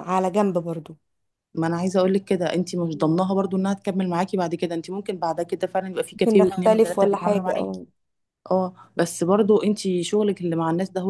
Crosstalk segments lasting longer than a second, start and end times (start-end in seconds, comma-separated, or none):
6.1-7.8